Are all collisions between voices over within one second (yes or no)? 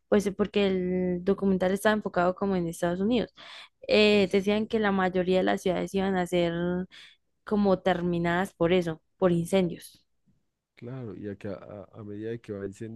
yes